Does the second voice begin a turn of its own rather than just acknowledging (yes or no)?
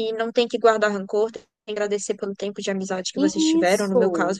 no